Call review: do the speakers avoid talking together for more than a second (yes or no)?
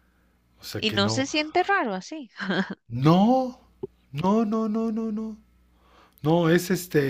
yes